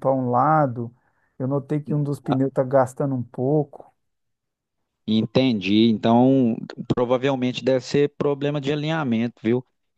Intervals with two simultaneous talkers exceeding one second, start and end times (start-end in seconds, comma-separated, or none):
none